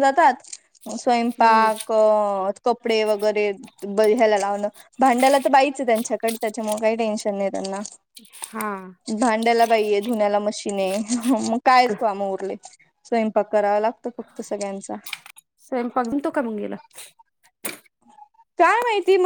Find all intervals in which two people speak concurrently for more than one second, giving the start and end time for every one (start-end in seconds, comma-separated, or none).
none